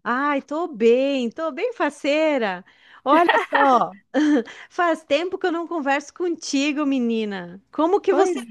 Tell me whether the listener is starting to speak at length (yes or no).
no